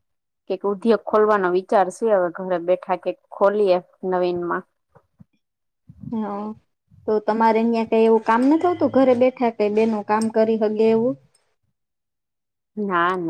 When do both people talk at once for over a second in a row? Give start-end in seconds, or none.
none